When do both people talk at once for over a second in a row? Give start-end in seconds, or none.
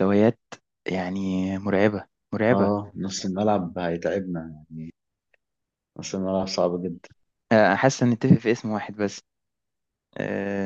none